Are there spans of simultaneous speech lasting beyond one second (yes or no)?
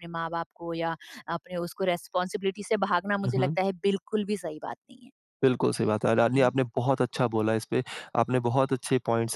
no